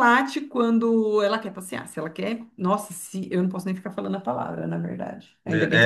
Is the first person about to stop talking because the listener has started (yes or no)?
yes